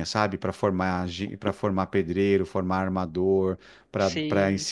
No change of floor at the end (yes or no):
yes